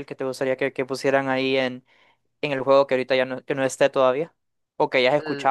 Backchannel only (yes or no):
no